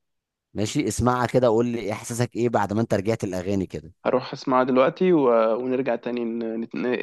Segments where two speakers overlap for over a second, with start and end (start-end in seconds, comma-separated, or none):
none